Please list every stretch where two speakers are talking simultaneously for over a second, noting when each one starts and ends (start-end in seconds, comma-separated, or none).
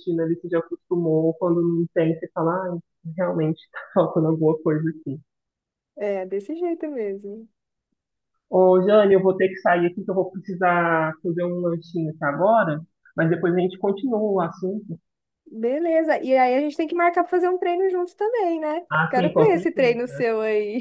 18.9-20.3